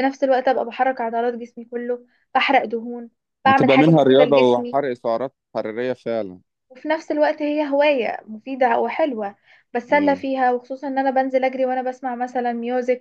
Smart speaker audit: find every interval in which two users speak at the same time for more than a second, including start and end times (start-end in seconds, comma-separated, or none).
3.5-4.8